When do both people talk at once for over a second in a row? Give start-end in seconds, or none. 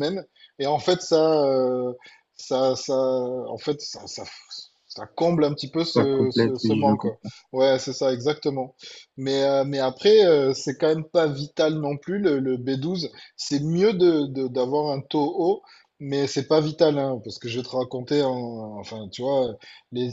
5.8-7.3